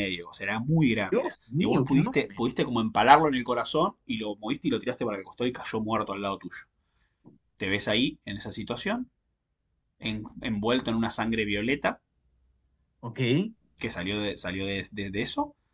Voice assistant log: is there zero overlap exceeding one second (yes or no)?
no